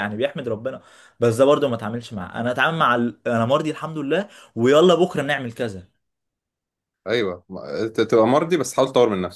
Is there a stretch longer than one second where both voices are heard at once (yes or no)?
no